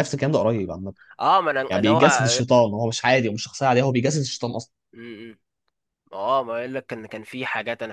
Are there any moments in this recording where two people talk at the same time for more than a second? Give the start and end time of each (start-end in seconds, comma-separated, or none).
none